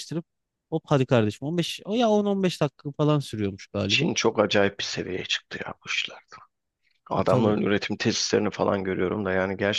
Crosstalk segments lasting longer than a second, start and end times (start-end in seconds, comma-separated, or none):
none